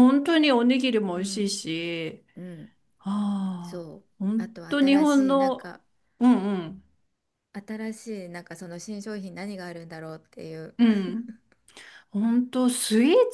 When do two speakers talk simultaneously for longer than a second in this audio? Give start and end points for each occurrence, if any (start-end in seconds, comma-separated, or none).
3.6-5.7